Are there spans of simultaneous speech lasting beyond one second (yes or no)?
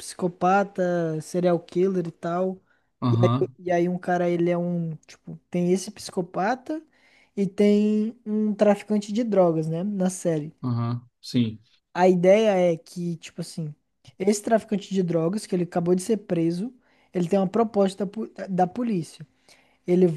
no